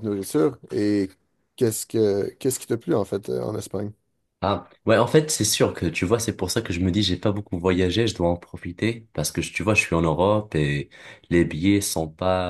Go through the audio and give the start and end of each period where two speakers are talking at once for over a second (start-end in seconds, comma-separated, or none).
none